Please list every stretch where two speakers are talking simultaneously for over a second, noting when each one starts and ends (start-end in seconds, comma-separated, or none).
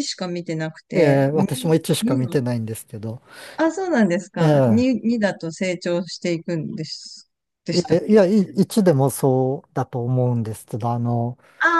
0.9-2.4